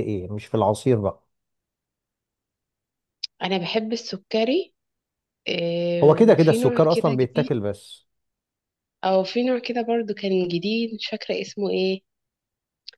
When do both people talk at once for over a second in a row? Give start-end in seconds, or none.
6.0-7.5